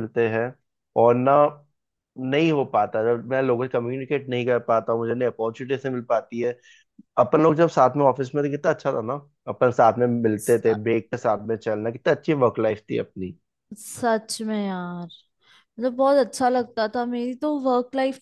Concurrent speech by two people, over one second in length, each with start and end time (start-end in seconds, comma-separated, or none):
none